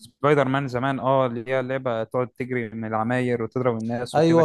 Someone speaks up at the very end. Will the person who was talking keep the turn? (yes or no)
no